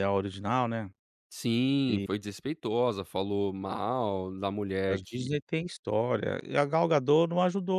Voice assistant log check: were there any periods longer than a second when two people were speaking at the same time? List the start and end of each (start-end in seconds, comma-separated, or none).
none